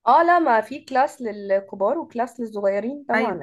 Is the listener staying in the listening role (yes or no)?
no